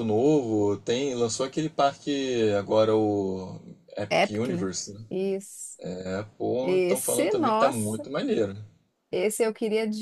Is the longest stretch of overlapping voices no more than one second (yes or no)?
no